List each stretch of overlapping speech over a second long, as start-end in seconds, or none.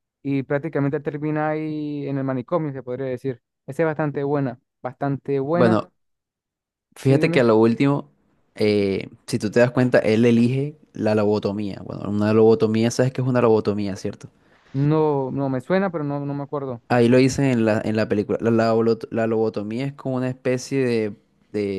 none